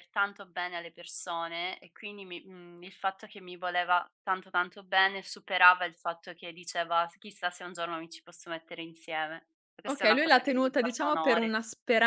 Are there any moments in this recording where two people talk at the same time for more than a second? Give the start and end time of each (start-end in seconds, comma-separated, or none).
9.9-11.6